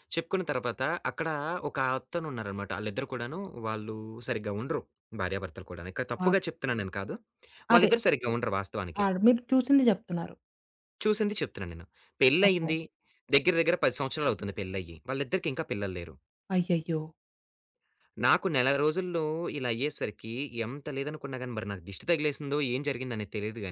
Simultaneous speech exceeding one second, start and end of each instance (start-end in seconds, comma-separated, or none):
none